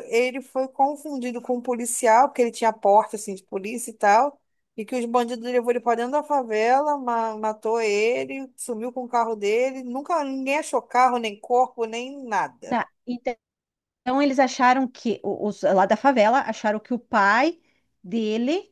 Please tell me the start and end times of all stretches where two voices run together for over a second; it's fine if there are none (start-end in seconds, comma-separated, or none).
none